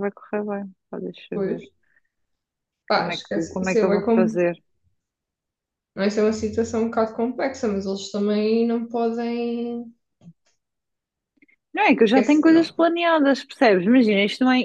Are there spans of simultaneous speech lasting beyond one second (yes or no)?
yes